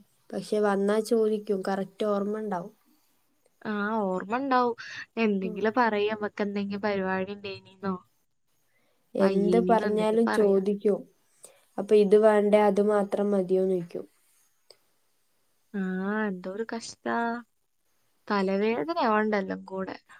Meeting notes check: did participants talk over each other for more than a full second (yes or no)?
yes